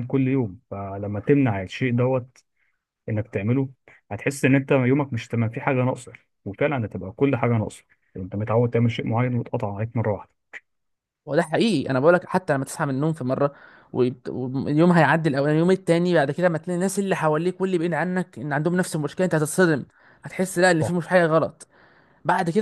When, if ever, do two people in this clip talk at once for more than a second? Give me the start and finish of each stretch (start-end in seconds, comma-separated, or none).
none